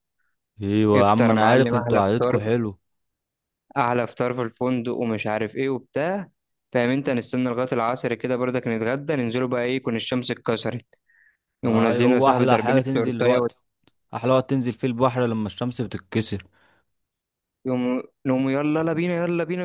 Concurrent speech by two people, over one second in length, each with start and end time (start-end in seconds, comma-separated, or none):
0.9-2.4, 11.6-13.5